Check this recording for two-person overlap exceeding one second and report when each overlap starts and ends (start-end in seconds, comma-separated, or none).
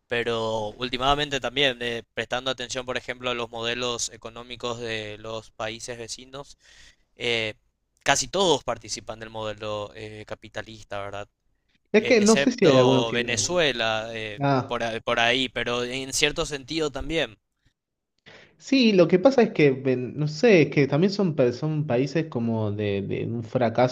11.9-13.4